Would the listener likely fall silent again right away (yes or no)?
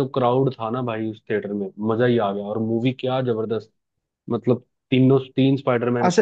no